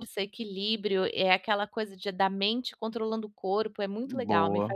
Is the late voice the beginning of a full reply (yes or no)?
yes